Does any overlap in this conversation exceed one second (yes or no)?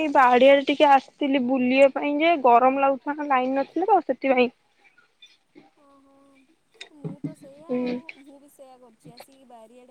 no